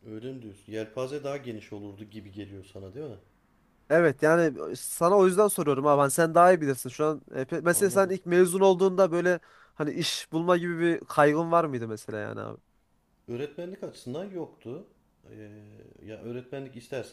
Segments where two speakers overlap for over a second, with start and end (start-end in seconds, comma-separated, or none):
none